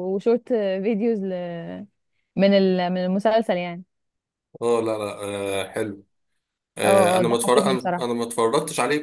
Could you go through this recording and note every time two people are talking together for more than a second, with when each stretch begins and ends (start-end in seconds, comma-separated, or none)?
6.8-8.2